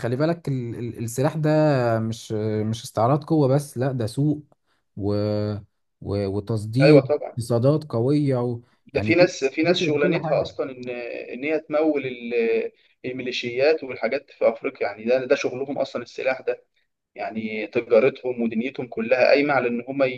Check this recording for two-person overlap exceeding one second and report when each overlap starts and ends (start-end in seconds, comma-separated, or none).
8.9-10.5